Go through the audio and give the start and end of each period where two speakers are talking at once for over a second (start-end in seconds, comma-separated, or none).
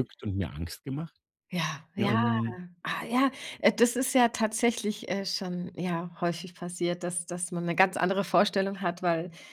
none